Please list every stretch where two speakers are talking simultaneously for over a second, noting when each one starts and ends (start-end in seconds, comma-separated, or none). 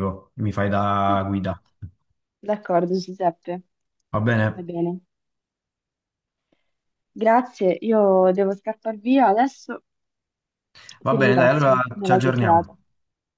11.1-12.8